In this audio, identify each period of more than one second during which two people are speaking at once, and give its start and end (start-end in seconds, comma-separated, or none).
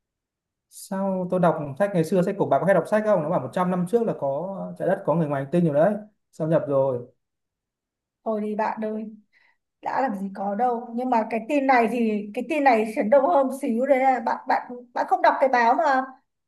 none